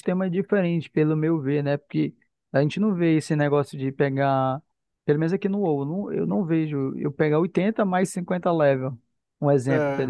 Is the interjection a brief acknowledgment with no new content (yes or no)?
no